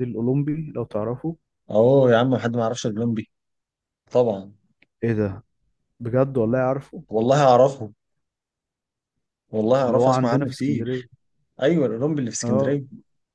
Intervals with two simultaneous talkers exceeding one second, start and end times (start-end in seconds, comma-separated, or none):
9.8-11.1